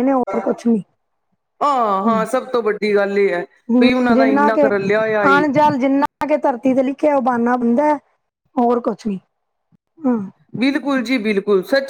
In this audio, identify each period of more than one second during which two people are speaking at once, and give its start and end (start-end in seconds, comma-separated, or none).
none